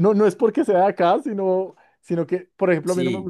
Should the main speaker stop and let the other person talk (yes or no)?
no